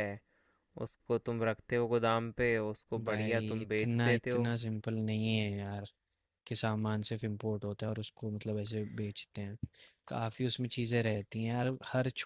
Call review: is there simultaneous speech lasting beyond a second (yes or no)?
yes